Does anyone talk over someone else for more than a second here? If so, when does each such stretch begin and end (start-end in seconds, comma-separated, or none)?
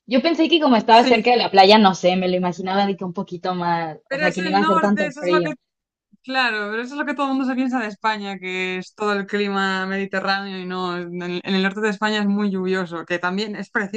4.1-5.5